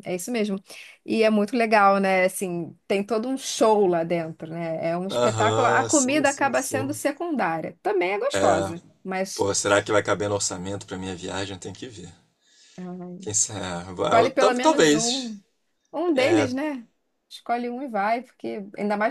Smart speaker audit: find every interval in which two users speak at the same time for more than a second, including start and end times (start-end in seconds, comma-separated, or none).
5.1-7.0, 14.0-15.3